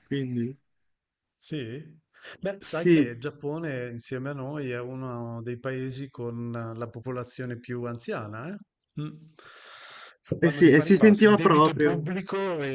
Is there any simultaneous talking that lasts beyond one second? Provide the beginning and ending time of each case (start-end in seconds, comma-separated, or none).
10.4-12.1